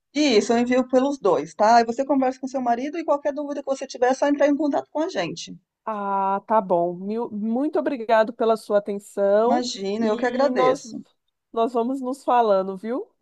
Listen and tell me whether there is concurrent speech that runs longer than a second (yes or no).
yes